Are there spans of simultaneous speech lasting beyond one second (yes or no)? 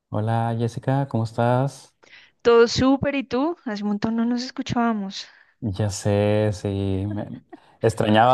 no